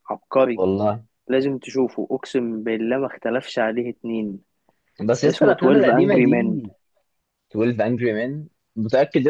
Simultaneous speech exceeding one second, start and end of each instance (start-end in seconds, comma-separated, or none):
5.2-6.7